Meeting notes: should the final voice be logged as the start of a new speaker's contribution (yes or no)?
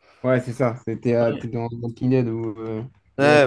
yes